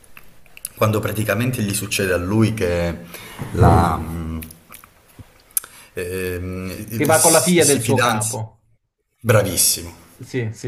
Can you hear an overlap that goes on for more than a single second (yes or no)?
yes